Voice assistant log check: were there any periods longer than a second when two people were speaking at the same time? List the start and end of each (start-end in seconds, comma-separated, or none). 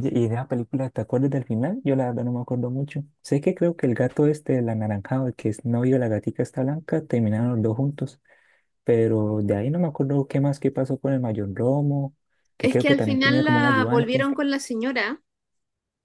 12.6-14.3